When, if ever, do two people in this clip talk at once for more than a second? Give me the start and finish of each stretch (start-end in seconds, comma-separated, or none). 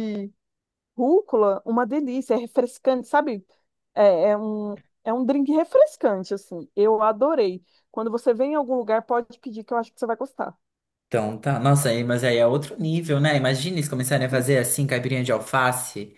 none